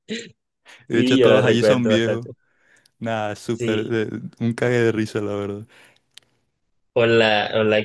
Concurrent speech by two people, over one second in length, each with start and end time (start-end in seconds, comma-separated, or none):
0.9-2.2